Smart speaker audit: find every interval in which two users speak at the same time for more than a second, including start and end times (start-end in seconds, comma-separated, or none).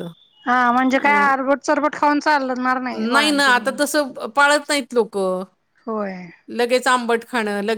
none